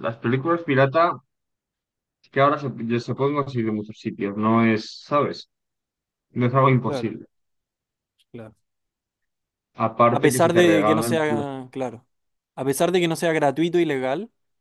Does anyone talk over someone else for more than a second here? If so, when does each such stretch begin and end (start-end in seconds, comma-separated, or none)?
10.1-11.5